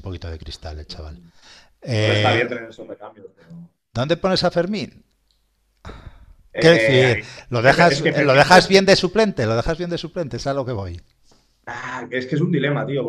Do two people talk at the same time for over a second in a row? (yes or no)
yes